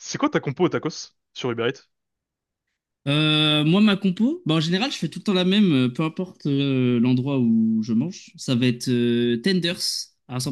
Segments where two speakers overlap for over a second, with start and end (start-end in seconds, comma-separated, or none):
none